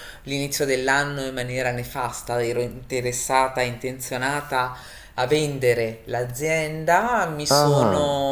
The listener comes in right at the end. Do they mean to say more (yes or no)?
no